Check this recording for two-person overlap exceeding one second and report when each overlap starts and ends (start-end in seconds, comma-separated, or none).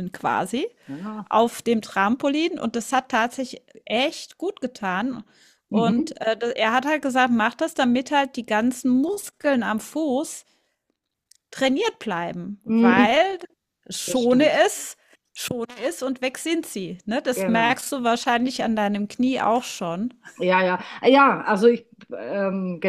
none